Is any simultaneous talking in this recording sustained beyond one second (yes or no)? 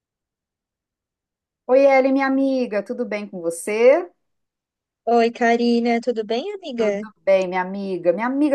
no